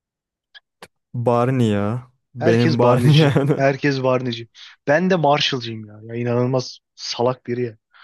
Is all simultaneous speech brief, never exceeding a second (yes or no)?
no